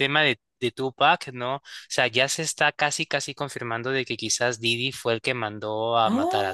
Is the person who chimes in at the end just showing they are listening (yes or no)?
no